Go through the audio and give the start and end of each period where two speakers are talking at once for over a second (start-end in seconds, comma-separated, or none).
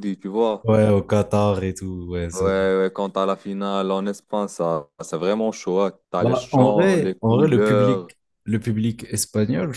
6.2-8.1